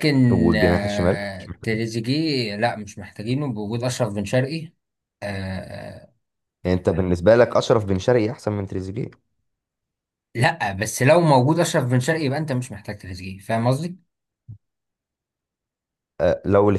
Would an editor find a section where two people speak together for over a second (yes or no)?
yes